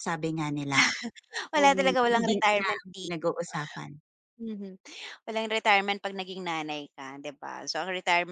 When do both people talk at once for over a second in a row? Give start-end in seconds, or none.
1.6-3.2